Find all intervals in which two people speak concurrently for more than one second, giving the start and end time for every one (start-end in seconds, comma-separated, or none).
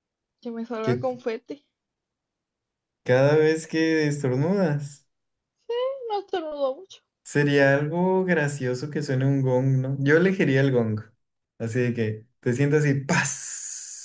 none